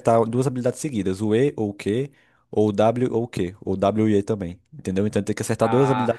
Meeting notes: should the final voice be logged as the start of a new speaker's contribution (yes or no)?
yes